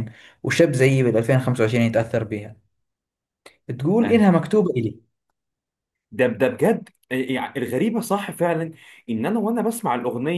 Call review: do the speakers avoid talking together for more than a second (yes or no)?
yes